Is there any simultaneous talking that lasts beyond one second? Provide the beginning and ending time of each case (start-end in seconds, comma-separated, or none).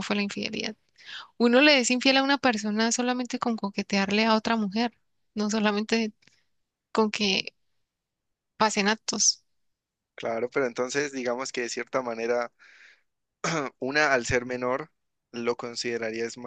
none